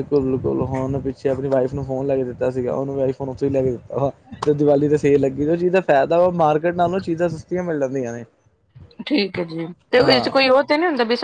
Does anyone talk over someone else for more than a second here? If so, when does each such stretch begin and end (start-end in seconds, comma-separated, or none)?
none